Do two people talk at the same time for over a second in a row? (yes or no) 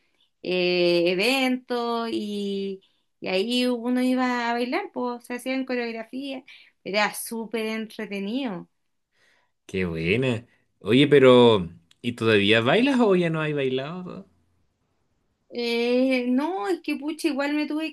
no